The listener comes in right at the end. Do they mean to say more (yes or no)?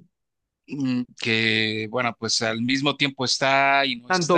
yes